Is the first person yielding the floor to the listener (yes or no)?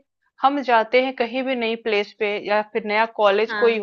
no